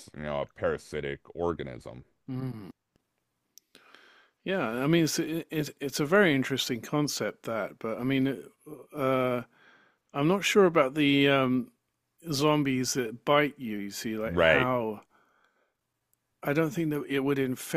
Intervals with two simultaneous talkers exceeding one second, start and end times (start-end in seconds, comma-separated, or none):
none